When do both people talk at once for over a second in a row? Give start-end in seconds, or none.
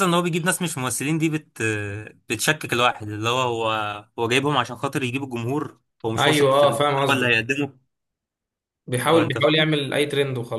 6.2-7.5